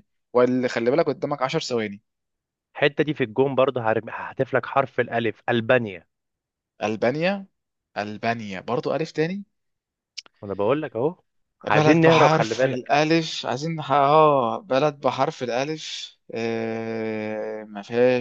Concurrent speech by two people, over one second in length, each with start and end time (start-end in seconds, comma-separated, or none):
11.6-12.9